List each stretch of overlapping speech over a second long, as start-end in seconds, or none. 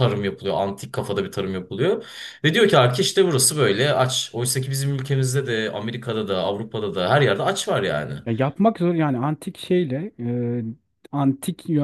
none